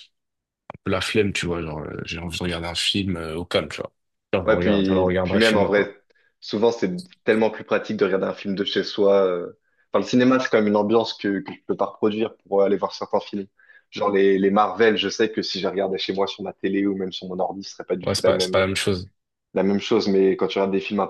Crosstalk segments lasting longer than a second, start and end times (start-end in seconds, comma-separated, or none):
4.5-5.9